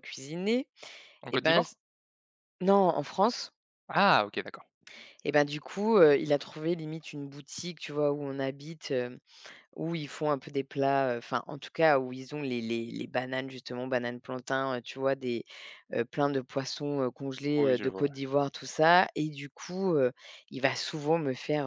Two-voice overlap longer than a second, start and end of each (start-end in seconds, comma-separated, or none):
none